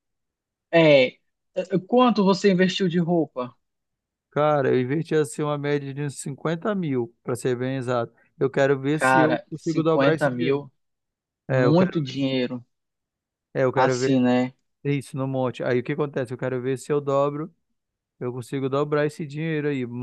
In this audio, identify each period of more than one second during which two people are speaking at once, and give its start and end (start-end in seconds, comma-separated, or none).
8.9-10.6